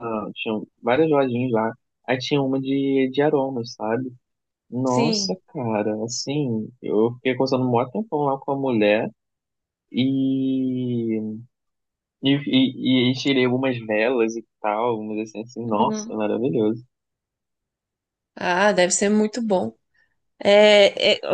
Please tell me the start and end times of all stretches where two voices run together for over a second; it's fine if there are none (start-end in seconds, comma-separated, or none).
none